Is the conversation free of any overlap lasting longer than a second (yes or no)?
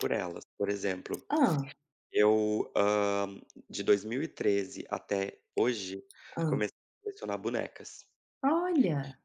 yes